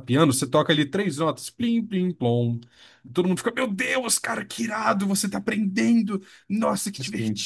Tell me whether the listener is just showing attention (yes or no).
no